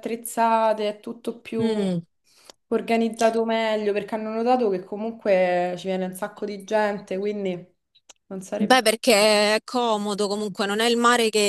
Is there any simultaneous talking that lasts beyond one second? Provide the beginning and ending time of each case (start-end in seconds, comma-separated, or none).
none